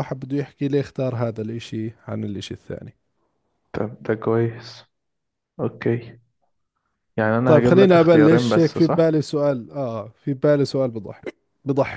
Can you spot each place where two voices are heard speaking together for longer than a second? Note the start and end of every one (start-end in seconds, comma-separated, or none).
7.4-9.1